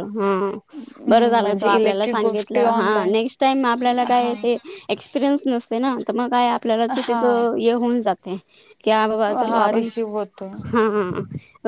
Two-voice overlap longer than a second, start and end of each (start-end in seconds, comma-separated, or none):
1.1-3.1